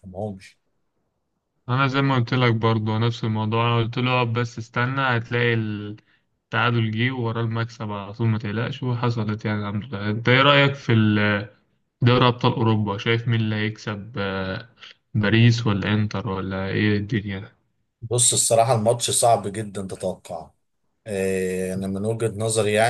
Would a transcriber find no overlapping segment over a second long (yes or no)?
yes